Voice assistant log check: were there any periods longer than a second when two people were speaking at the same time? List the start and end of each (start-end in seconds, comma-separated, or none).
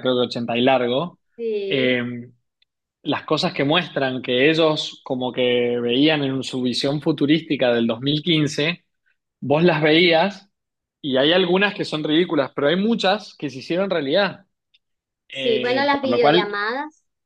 15.3-16.6